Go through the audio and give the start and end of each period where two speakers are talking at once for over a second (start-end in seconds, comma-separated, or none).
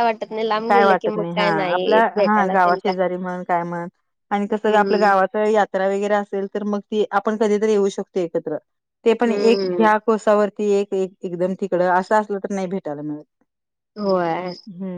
0.7-2.9